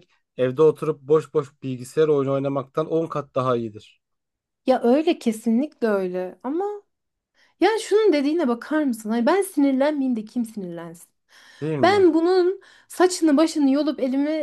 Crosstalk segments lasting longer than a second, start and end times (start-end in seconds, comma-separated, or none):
none